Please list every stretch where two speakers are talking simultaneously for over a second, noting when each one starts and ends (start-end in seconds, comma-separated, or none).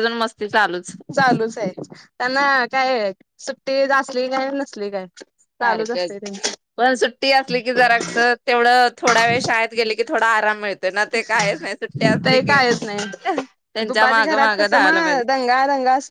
13.2-14.9